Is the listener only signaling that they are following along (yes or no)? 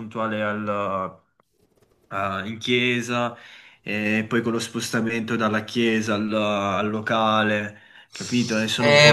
no